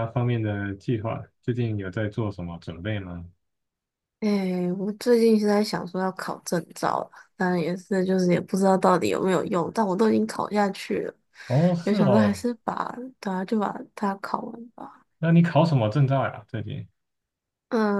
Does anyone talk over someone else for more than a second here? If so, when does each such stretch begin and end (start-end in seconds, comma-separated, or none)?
none